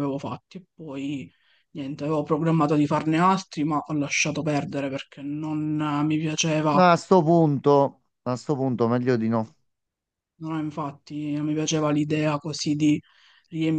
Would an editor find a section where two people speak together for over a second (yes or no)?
no